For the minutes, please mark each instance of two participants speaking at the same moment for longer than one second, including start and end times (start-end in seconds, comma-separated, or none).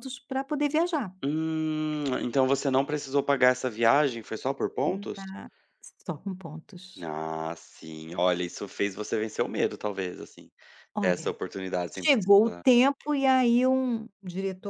none